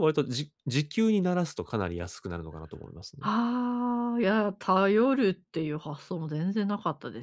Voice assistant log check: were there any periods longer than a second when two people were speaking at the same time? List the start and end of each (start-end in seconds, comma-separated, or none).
none